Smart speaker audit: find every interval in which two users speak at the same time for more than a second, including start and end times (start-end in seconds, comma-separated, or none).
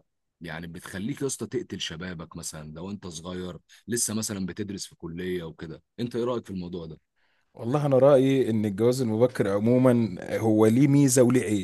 none